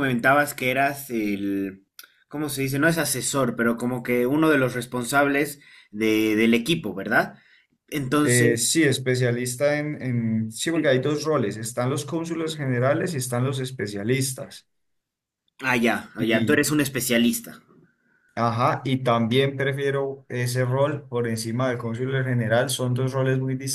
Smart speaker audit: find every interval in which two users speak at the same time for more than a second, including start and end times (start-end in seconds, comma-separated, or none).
none